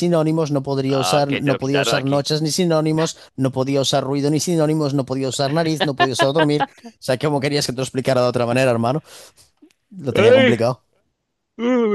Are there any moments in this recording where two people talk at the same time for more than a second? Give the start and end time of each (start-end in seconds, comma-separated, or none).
0.9-2.3